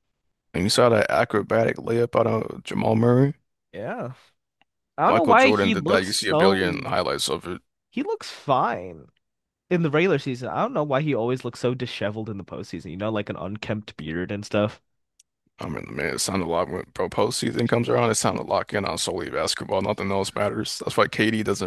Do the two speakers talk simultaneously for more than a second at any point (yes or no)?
yes